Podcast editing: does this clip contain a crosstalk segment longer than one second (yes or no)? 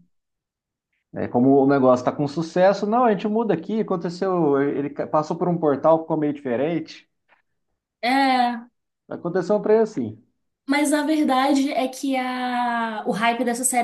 no